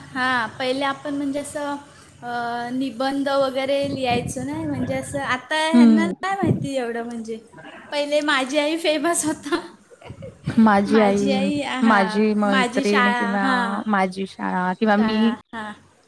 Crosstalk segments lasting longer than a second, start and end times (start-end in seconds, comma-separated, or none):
11.9-13.4